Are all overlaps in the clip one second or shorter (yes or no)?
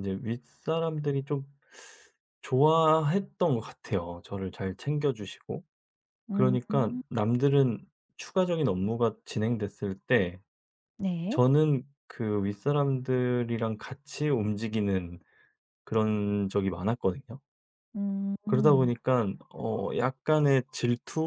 yes